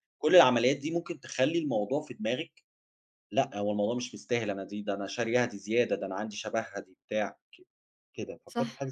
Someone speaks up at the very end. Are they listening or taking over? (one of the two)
taking over